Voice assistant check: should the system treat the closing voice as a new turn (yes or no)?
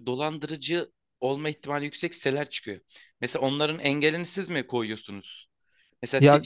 no